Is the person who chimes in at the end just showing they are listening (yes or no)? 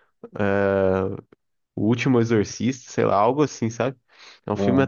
yes